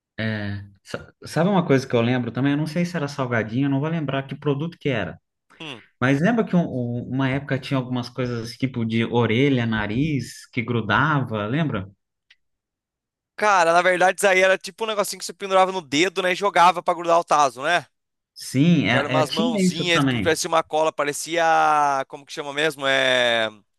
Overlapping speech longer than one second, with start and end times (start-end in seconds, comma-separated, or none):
18.9-20.4